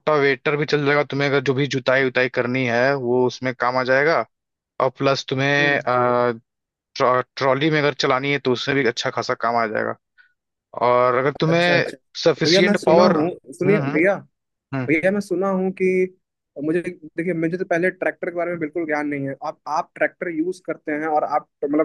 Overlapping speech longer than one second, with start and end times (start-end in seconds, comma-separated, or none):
11.5-14.0